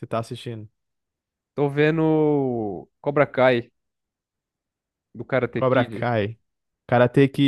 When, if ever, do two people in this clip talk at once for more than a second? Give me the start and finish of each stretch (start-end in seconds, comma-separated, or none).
none